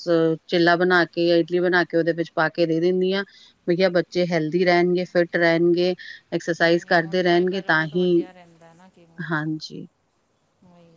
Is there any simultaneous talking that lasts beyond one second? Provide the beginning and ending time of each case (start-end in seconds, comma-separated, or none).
6.6-8.1